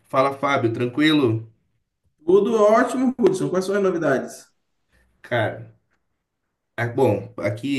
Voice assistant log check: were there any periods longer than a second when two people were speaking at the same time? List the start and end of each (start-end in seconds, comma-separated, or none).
none